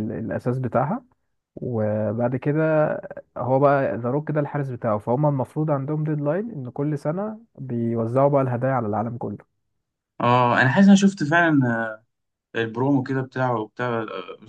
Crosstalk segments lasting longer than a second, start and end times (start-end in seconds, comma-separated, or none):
none